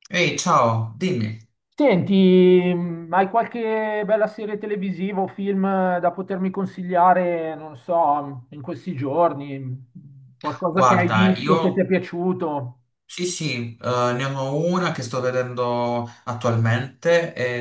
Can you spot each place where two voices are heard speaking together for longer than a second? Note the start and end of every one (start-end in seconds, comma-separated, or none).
10.7-11.9